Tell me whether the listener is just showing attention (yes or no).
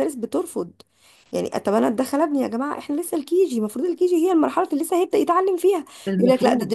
yes